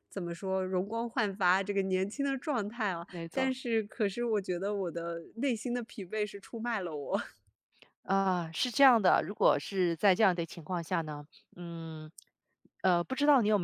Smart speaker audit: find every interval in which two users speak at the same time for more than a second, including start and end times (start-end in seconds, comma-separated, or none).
none